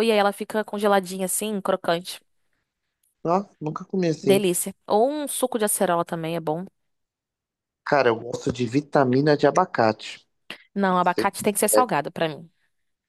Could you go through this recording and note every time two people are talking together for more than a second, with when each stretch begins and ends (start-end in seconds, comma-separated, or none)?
none